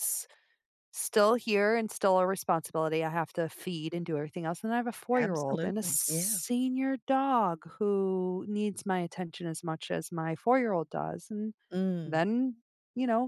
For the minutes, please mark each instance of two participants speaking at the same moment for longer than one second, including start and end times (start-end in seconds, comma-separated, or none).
5.1-6.4